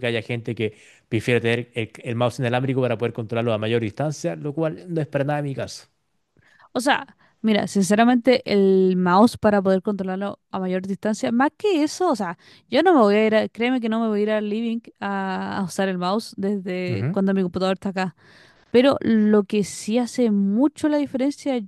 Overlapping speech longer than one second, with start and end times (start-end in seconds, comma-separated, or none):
none